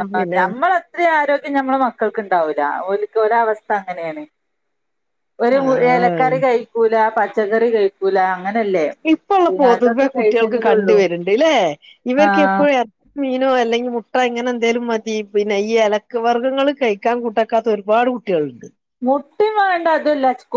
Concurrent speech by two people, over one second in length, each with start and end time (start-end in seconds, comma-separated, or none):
9.5-11.0